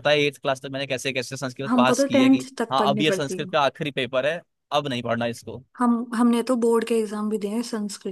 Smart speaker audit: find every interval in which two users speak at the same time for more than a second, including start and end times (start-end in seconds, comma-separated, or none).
1.7-3.5